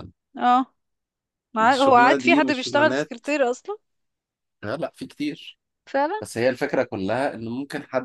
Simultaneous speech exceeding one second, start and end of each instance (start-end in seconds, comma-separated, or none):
1.7-3.1